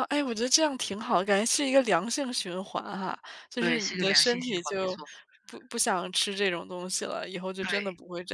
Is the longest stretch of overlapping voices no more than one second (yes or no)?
no